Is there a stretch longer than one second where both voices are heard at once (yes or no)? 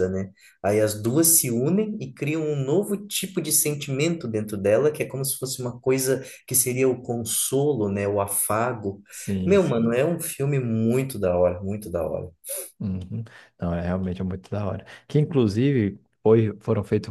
no